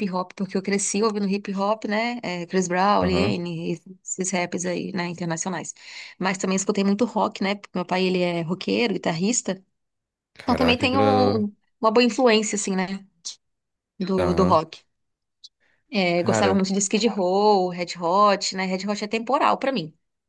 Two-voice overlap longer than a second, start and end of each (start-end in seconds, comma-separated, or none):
none